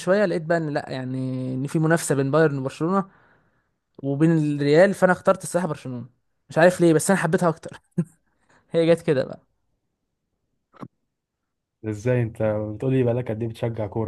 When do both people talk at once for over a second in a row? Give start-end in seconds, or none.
none